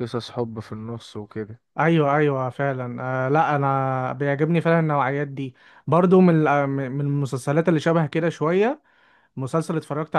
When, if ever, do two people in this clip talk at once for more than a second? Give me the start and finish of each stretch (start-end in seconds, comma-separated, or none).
none